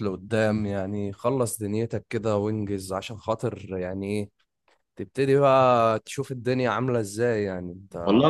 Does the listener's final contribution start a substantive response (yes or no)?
yes